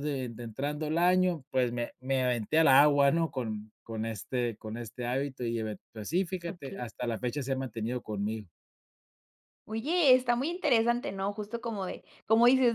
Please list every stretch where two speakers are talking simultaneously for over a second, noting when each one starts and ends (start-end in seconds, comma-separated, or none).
none